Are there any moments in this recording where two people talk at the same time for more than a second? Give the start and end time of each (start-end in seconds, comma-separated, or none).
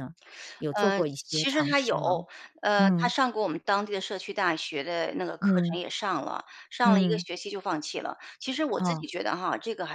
0.8-2.0